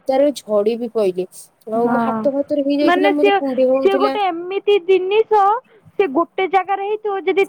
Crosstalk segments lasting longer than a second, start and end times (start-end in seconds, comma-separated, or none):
none